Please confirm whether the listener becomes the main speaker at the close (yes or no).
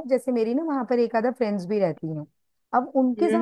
no